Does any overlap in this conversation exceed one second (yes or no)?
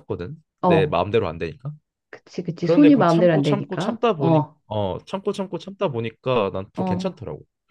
yes